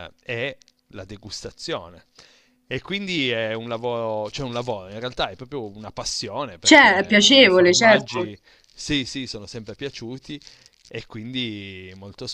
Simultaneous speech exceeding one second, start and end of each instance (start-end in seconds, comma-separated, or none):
6.6-8.3